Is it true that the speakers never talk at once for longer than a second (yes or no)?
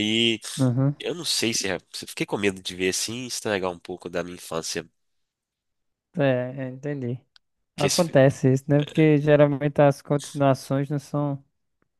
yes